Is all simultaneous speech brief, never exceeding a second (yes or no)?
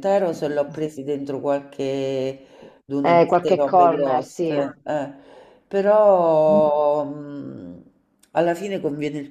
no